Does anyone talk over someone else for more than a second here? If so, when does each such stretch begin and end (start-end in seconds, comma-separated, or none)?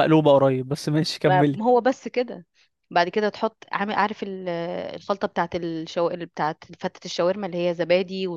none